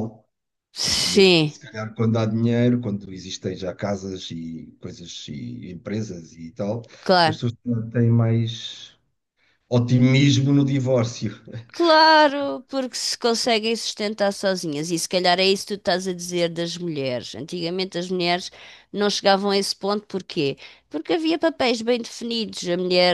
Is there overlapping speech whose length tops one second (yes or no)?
no